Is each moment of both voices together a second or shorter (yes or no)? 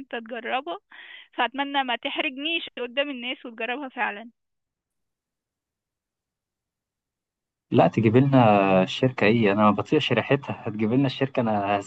yes